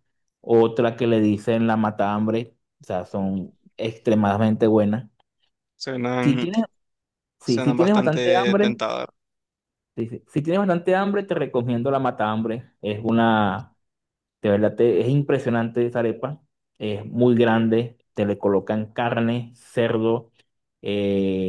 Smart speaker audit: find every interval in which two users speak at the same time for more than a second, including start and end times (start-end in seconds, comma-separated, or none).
7.4-8.8